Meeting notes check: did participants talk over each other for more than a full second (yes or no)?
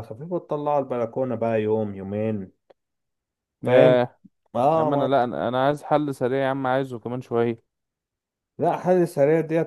no